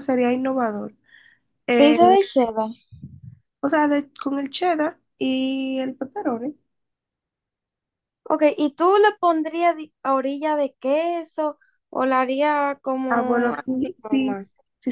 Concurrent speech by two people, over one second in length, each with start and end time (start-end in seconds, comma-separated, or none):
13.1-14.4